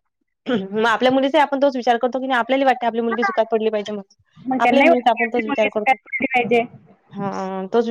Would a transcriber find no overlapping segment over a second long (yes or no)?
no